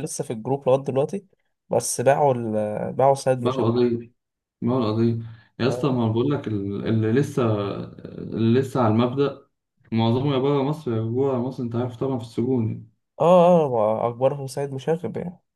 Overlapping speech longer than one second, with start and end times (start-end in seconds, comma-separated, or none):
none